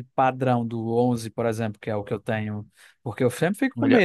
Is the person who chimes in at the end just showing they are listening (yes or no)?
yes